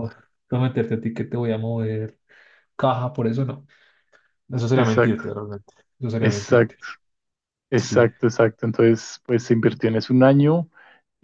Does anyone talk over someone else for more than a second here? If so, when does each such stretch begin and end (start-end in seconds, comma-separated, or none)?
none